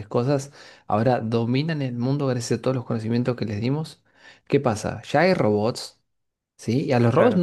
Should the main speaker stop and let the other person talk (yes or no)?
no